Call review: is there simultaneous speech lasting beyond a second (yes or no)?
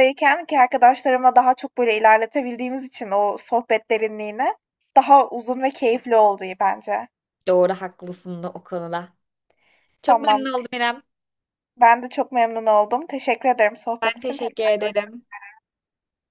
yes